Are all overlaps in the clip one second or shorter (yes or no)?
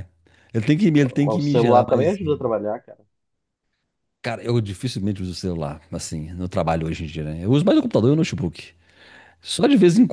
no